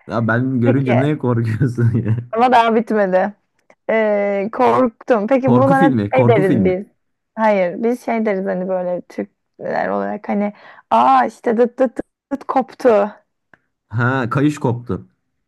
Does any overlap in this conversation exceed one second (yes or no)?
yes